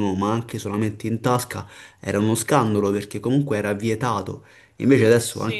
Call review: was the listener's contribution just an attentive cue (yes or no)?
yes